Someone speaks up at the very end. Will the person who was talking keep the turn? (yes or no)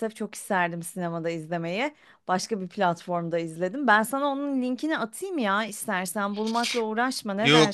no